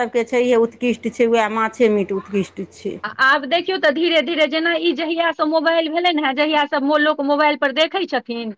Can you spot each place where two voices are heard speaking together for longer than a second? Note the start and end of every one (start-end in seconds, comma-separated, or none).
none